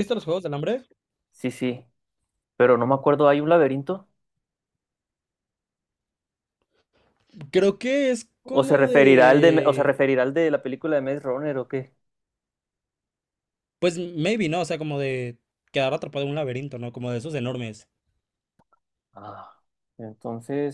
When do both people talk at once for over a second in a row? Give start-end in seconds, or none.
8.4-10.0